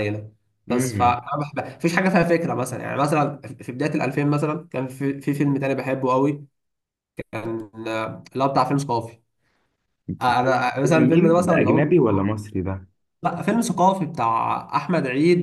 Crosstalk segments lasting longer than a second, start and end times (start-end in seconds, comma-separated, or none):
10.8-12.3